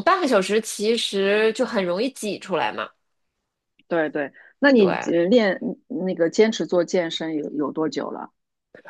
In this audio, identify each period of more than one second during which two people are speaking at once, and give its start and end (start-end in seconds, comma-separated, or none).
none